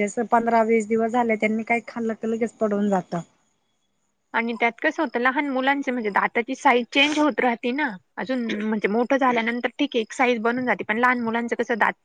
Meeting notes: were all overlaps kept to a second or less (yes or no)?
yes